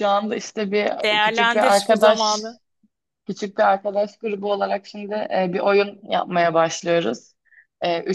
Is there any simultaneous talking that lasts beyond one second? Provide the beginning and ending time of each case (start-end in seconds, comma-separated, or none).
1.0-2.5